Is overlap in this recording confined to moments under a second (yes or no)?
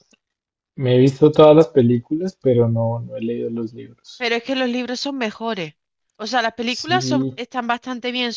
yes